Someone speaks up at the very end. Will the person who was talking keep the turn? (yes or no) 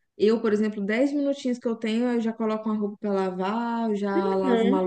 no